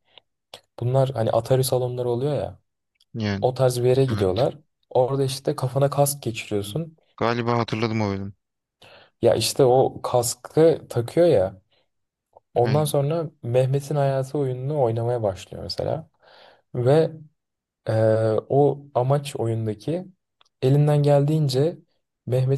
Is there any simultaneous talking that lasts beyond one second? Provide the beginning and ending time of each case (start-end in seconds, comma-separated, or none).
none